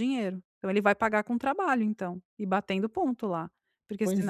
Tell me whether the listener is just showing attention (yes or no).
no